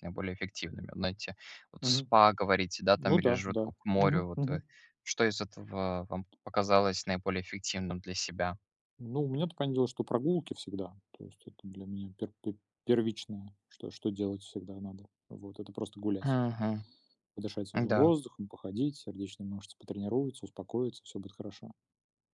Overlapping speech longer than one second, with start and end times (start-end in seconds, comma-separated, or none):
3.0-4.6